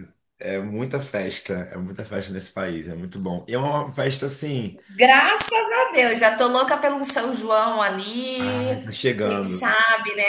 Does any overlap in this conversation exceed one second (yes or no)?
yes